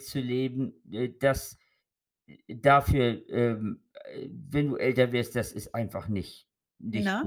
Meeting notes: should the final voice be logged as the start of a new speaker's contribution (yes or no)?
no